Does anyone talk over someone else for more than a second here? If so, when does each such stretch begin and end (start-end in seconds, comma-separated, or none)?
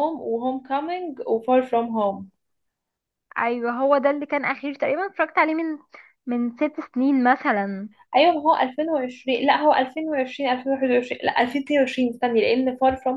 none